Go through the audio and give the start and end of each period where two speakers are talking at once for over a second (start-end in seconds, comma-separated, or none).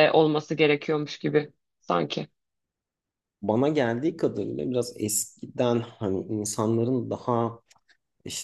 none